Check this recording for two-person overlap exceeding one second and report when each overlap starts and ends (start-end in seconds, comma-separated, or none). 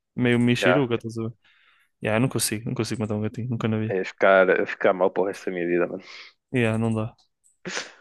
none